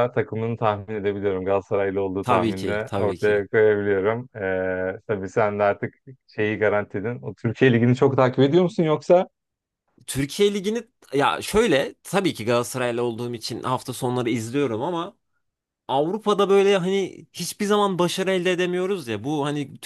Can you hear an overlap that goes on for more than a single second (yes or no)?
yes